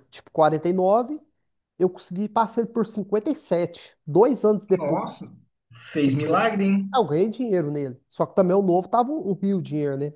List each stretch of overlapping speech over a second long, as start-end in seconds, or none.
none